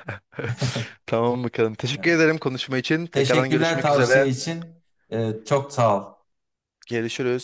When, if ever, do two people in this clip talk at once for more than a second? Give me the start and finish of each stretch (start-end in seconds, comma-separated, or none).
3.1-4.3